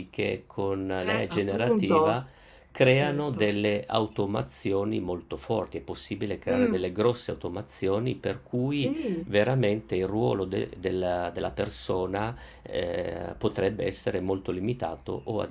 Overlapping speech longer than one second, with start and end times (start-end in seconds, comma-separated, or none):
1.0-2.2